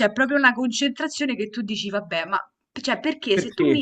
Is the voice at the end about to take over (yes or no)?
no